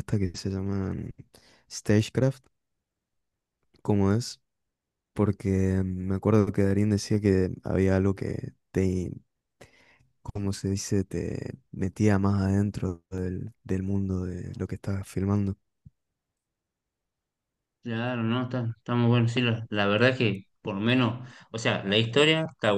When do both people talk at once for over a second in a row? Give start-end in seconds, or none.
none